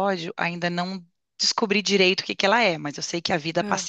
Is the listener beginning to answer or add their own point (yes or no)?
no